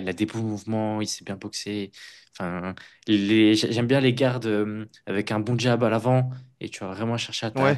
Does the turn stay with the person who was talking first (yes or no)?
yes